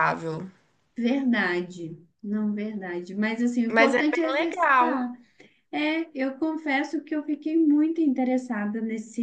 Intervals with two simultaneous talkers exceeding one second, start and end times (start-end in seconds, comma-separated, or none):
3.7-5.1